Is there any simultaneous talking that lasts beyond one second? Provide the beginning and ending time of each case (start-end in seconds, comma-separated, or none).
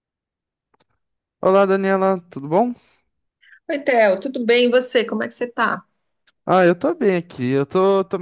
none